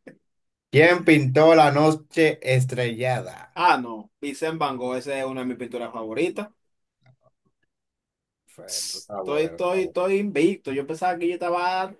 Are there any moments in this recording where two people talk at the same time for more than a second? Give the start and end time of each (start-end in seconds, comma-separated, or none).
8.7-10.0